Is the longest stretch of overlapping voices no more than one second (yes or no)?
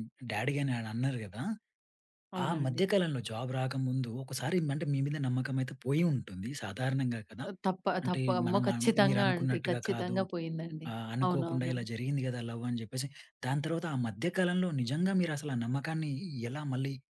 no